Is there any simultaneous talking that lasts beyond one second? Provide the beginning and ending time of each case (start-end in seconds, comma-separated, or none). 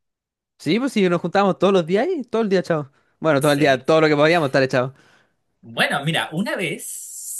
none